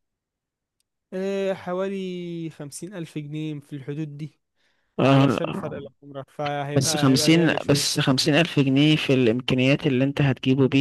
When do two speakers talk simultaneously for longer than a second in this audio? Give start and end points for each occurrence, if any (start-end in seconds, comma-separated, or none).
6.8-8.1